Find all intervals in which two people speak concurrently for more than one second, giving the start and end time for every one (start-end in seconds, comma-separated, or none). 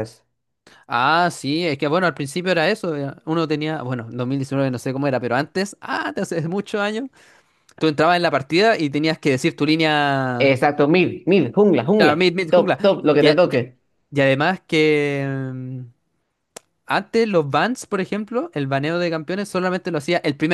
12.0-13.7